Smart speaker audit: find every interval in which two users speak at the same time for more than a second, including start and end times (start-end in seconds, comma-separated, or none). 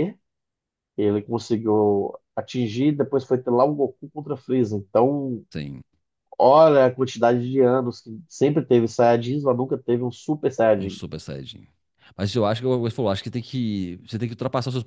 none